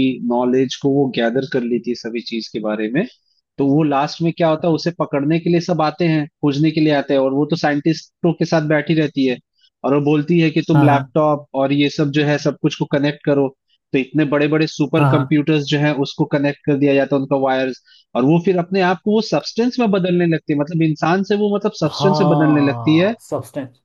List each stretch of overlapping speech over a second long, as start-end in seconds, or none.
21.8-23.1